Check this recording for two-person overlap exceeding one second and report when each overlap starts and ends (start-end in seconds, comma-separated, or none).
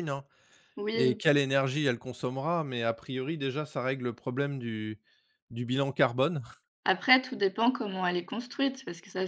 none